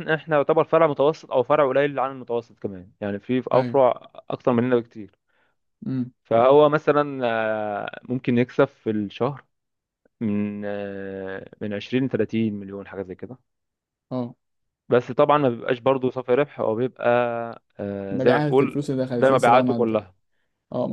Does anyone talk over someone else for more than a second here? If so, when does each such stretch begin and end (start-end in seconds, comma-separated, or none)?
18.1-20.0